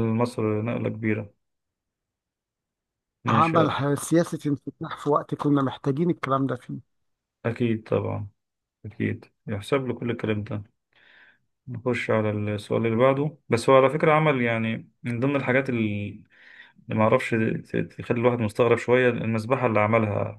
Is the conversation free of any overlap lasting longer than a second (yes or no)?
yes